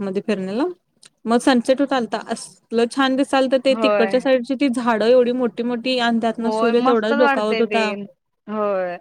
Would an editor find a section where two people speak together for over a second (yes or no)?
yes